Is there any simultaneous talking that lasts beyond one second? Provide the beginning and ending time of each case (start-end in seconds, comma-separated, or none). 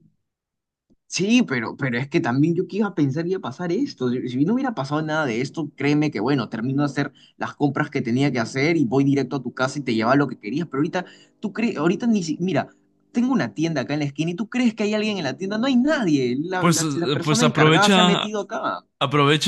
16.6-18.3